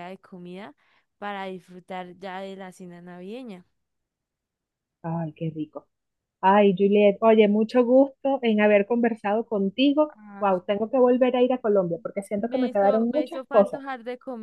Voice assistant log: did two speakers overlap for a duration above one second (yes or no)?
yes